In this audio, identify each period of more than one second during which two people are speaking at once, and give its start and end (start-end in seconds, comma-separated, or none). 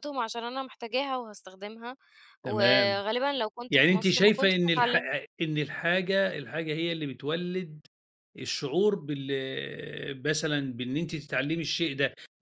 3.7-5.0